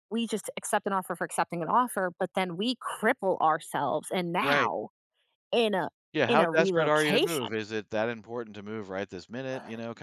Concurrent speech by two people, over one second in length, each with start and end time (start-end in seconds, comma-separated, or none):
6.3-7.6